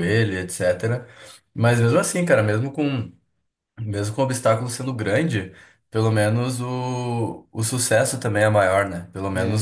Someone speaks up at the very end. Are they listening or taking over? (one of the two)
listening